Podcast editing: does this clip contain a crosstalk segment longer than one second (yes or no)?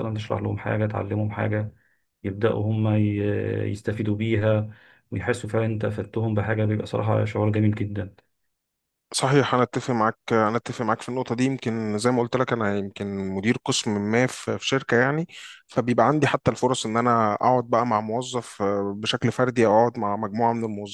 no